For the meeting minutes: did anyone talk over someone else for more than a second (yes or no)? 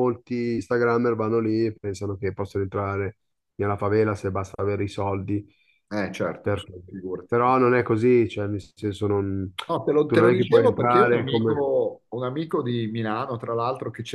yes